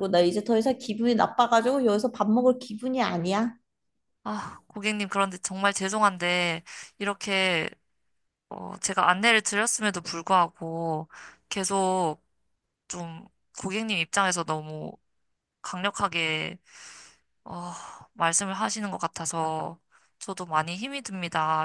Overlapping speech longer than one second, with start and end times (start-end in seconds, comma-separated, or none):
none